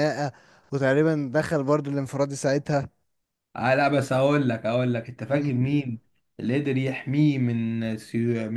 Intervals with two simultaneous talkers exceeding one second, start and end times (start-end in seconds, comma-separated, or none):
none